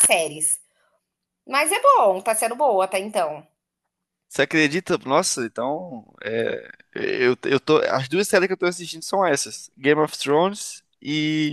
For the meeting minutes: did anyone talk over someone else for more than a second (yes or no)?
no